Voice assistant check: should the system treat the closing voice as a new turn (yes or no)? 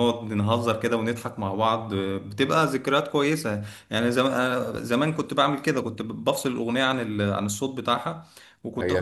yes